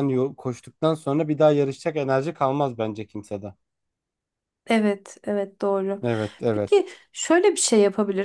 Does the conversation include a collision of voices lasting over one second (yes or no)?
no